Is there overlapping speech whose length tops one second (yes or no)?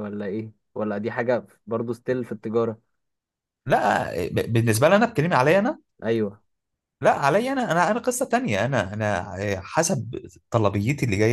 no